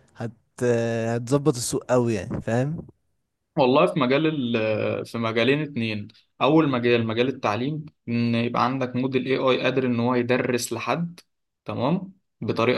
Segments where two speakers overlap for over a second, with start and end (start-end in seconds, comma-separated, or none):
none